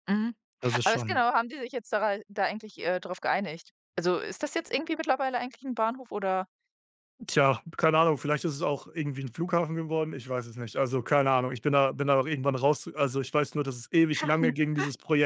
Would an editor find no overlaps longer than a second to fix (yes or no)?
yes